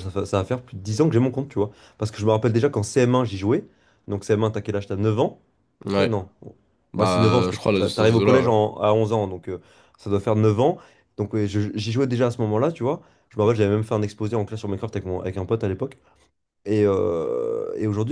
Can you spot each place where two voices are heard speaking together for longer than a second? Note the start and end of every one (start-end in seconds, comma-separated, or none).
7.0-8.5